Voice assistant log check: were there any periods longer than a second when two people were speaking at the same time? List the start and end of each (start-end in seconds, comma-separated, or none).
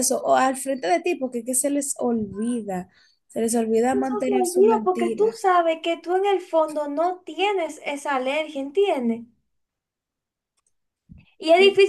3.9-5.4